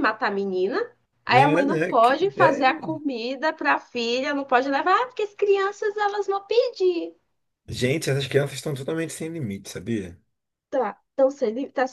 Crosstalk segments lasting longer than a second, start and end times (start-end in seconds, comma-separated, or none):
1.3-2.8